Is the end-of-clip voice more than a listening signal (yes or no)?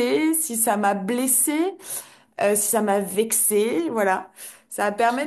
no